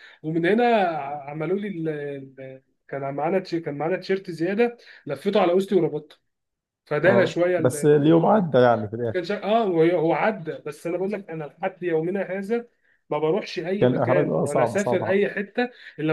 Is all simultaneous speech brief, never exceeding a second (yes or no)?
no